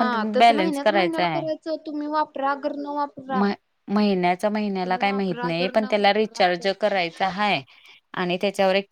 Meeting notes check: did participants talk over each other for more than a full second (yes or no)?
yes